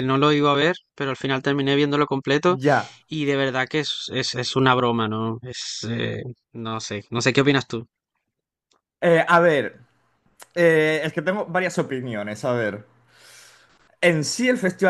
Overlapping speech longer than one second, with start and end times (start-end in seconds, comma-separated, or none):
none